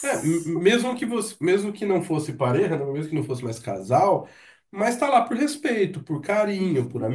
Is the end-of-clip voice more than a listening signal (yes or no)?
no